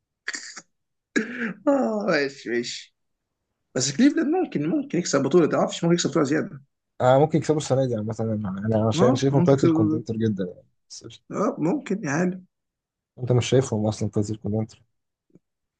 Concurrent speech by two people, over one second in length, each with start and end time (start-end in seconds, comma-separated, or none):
8.9-10.2